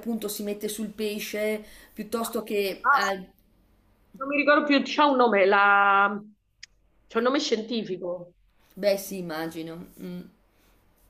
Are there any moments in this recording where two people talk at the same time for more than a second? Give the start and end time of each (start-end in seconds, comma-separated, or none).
none